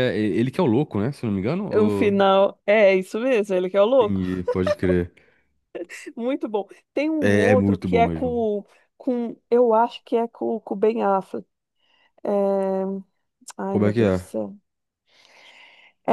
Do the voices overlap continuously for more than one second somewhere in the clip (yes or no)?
yes